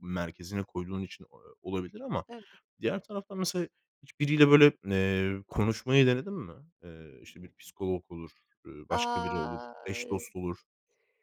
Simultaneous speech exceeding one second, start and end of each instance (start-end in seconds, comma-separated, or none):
8.9-10.2